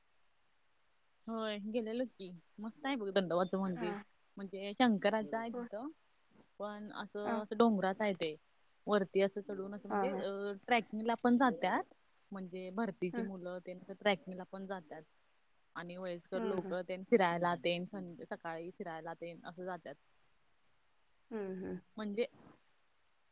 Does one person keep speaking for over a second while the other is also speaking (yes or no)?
no